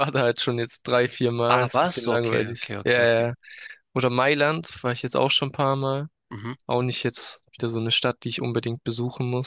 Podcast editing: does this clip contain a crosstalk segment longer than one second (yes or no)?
yes